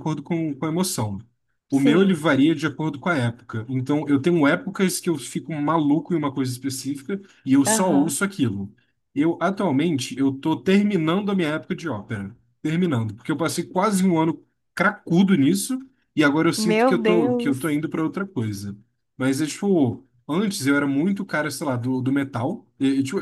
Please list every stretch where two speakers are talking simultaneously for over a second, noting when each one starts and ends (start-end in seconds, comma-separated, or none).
16.6-17.8